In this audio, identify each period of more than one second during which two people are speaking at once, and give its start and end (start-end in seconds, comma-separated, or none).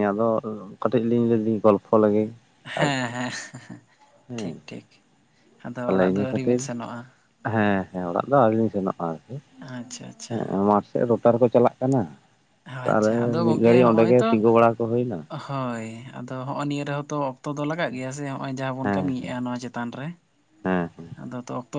12.6-14.3